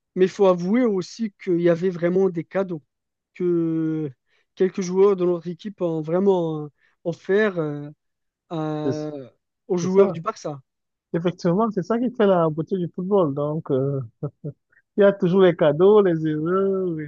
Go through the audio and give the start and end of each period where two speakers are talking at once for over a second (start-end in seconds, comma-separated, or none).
none